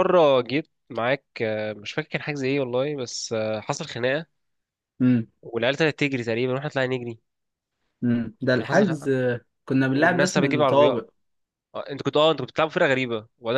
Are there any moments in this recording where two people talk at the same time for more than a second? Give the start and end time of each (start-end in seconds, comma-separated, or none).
9.8-11.1